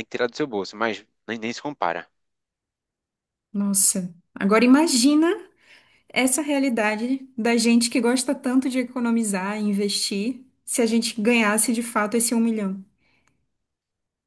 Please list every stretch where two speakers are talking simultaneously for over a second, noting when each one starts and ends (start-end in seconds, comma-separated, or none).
none